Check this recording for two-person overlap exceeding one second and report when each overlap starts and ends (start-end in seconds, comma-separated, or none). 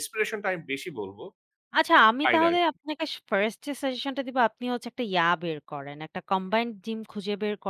none